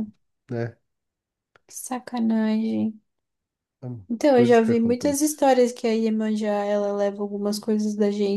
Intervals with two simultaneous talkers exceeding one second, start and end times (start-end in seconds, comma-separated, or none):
4.1-5.4